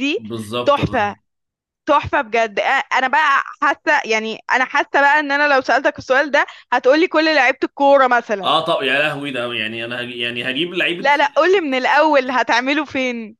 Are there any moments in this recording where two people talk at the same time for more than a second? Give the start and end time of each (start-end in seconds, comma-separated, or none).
none